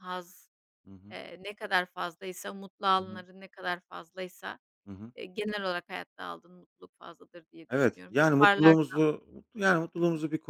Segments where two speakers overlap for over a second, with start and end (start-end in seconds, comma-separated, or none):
7.7-9.0